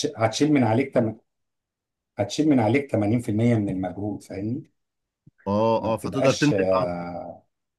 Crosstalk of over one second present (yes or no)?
yes